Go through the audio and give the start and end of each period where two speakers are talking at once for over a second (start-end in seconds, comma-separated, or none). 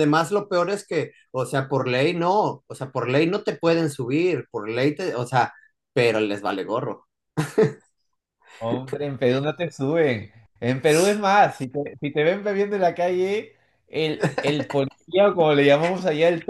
none